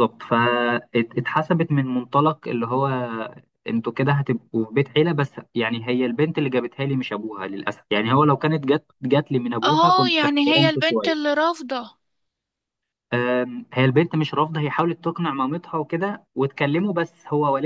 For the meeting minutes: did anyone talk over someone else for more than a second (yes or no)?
yes